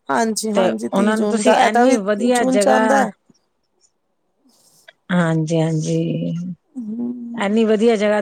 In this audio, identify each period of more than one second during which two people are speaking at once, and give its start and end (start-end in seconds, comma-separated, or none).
0.5-2.8